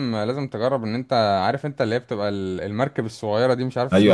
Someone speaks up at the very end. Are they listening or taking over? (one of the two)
taking over